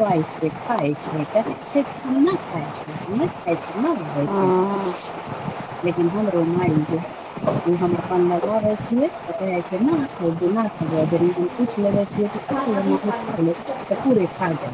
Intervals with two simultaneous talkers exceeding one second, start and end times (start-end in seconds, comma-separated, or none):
12.5-14.2